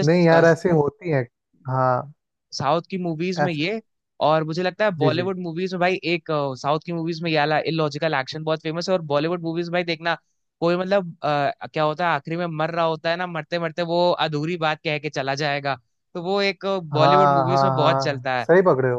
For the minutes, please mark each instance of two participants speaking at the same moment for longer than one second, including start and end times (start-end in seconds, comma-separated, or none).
16.9-18.5